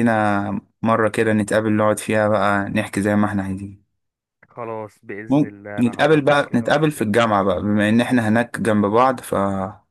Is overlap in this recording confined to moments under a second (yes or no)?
no